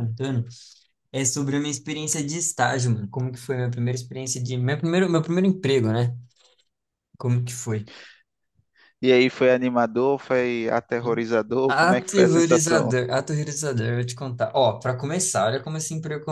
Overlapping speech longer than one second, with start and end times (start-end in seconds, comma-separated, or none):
11.7-12.9